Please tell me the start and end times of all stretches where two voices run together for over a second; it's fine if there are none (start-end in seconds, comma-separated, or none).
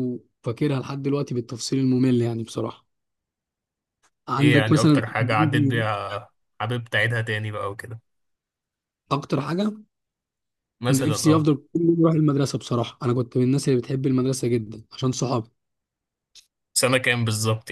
4.4-5.9